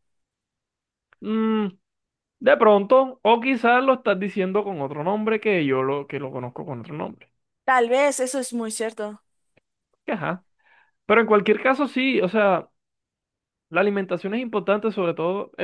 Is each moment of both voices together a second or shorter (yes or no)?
yes